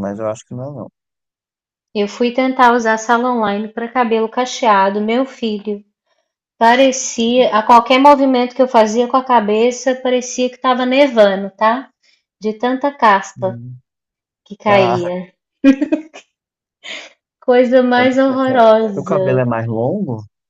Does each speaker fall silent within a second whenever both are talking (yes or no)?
no